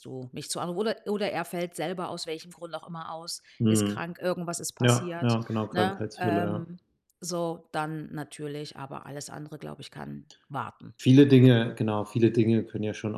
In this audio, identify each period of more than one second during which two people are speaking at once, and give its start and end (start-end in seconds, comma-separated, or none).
4.8-6.7